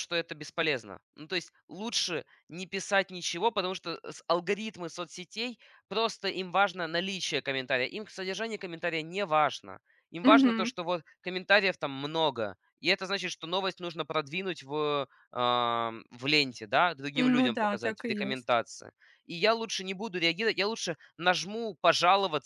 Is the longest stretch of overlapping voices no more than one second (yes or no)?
no